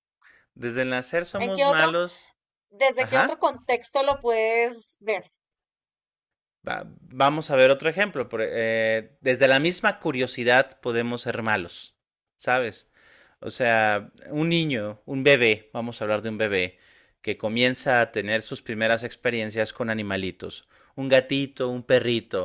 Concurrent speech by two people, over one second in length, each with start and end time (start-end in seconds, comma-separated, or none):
none